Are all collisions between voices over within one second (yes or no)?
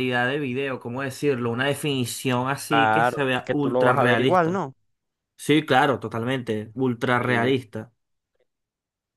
no